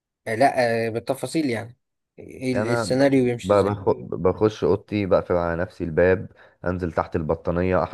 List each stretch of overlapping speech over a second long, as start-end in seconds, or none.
2.5-3.8